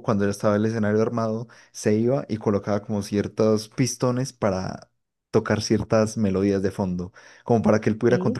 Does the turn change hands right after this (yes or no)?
no